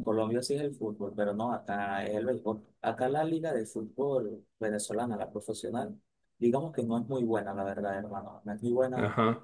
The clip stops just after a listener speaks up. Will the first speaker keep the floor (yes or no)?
yes